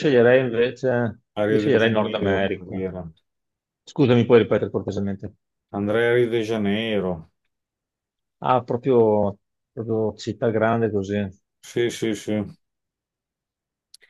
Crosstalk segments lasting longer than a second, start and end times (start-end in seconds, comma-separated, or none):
1.3-2.9